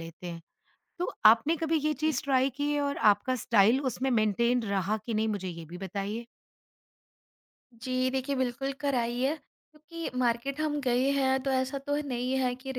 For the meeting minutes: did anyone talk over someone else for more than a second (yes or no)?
no